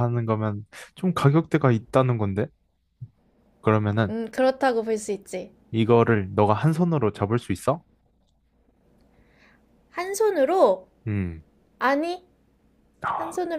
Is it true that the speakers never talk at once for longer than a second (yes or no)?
yes